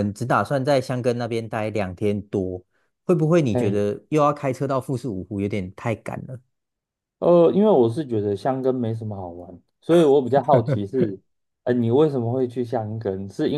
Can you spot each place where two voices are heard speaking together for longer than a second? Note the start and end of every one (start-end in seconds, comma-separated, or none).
none